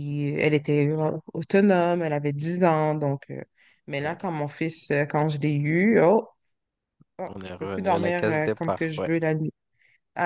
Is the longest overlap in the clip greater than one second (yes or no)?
yes